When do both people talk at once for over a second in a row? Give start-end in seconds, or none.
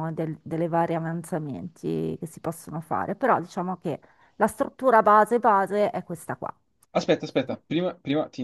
none